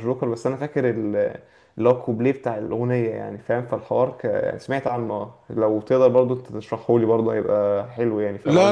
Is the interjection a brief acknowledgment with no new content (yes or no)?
no